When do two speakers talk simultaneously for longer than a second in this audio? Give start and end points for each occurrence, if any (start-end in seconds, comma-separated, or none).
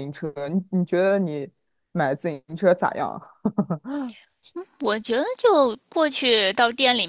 none